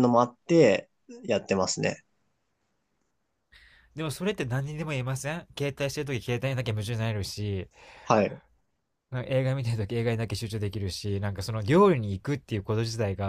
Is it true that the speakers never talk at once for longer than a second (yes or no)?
yes